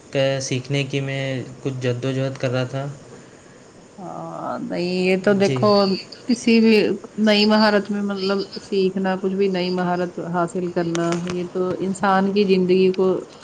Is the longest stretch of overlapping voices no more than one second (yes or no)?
yes